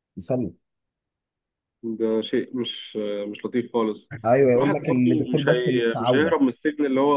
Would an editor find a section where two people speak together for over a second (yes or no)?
yes